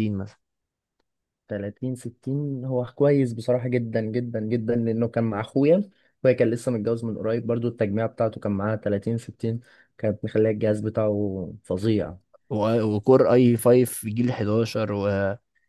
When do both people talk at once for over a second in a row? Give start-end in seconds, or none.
none